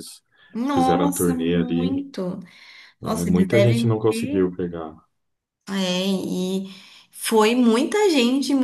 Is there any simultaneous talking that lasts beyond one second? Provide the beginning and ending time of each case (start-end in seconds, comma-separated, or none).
0.7-1.9, 3.0-4.5